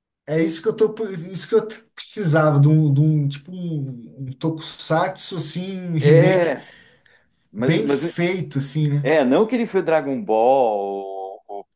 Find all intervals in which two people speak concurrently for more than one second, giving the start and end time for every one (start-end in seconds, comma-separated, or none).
none